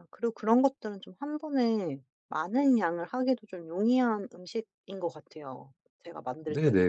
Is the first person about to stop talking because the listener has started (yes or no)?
yes